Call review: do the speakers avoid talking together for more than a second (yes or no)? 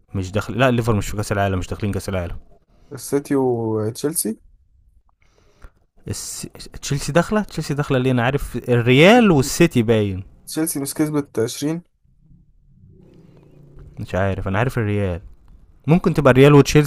yes